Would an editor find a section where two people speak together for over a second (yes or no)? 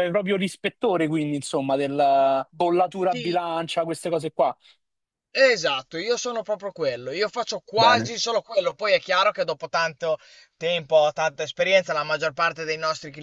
no